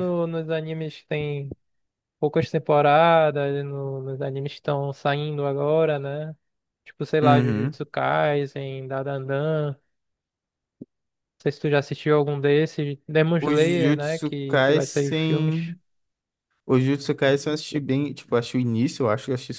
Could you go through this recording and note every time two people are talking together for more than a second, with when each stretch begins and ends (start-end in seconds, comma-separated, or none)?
13.4-15.6